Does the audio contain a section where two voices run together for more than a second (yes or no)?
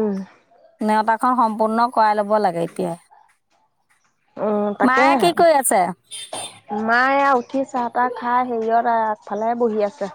no